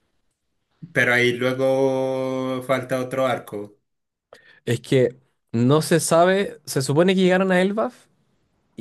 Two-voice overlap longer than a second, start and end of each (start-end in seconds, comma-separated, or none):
none